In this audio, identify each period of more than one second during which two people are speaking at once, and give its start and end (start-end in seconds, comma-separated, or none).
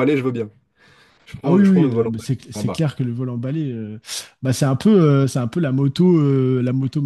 1.4-2.8